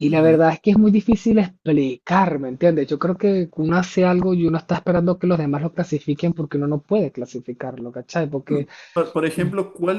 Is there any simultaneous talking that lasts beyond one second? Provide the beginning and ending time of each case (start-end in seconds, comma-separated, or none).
none